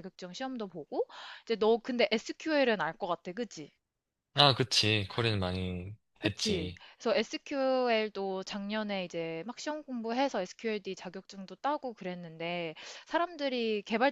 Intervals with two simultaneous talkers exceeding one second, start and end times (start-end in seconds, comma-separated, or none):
none